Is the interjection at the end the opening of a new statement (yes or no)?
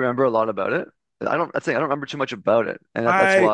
yes